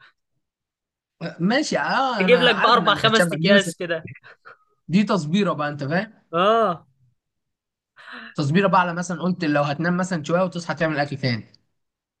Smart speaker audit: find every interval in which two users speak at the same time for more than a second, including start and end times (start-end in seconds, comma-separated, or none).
2.2-3.7